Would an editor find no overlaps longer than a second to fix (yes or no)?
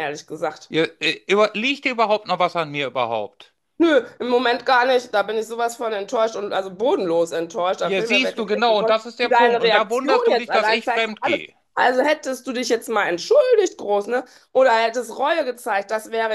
no